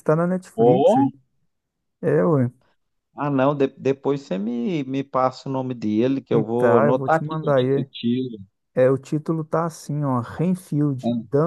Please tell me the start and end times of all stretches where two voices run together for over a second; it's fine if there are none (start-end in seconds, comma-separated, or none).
6.6-7.9